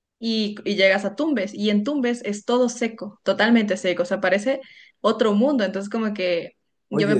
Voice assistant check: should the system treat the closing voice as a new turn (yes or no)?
no